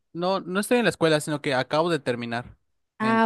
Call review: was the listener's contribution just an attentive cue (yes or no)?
yes